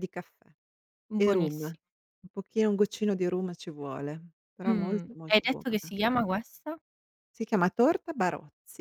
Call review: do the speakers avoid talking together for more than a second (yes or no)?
no